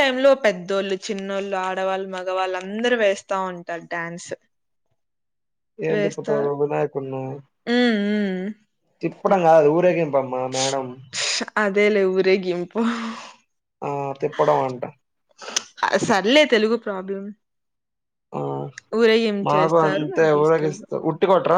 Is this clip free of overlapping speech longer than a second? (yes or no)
no